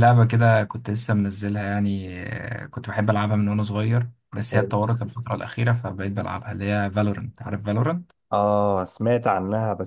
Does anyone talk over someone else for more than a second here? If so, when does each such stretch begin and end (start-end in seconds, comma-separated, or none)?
none